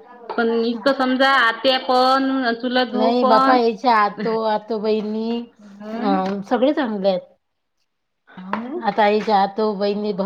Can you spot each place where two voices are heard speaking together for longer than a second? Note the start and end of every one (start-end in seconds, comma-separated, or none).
none